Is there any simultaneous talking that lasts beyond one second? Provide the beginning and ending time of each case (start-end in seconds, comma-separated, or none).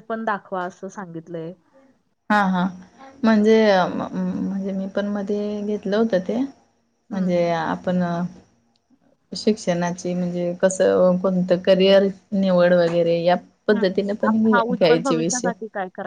13.8-15.5